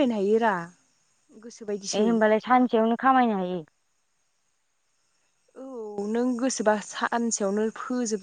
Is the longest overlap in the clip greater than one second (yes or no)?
no